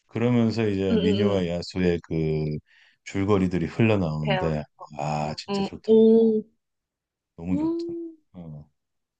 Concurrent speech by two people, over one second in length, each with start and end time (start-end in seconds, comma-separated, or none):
4.2-6.0